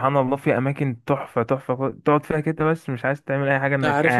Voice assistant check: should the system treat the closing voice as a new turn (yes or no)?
yes